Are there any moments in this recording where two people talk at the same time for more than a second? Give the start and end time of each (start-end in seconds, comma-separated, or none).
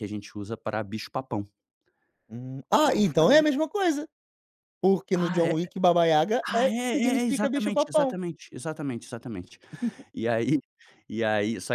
6.5-8.2